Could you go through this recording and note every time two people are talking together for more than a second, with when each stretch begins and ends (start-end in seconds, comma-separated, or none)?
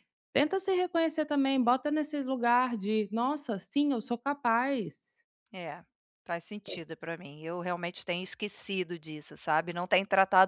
none